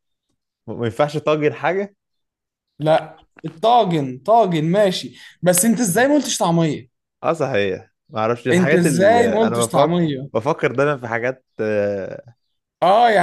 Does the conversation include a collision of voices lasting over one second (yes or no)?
yes